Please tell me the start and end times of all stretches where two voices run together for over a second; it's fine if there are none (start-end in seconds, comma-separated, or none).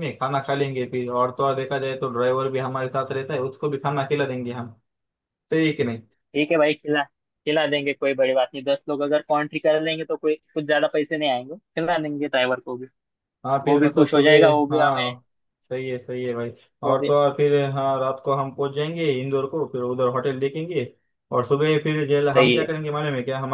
13.6-15.1